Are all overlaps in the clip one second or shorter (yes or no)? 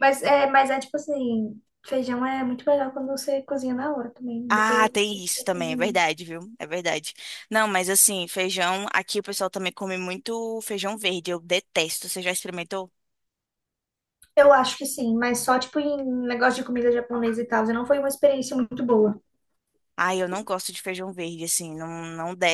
no